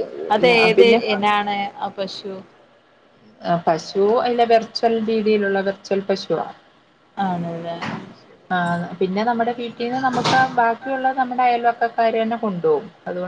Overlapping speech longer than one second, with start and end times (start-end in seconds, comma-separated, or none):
none